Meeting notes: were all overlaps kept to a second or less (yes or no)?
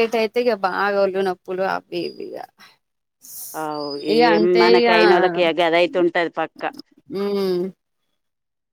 yes